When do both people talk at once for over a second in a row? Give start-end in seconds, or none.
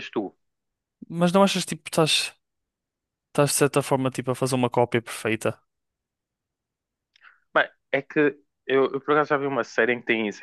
none